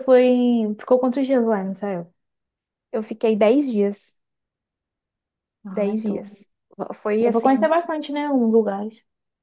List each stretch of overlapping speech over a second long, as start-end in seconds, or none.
none